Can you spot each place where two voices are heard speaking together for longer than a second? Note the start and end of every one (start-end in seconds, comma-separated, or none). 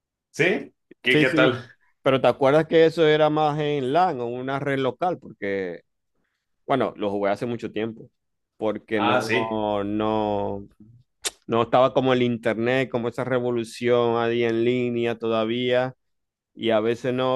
none